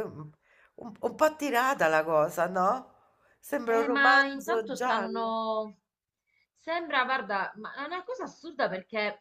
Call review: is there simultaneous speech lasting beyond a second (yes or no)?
yes